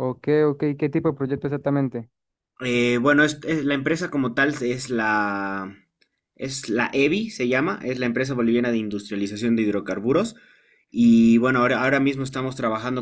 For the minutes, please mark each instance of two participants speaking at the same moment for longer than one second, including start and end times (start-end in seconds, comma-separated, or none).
none